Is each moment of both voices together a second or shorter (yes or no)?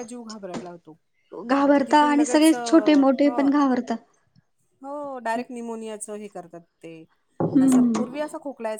no